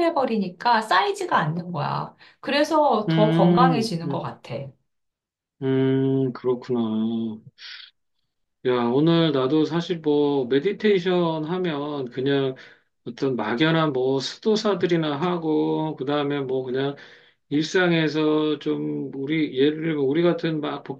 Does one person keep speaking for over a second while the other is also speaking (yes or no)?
yes